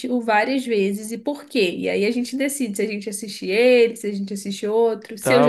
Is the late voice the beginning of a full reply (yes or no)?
yes